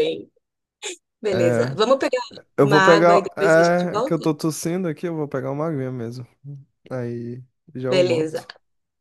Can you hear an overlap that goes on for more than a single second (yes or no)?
yes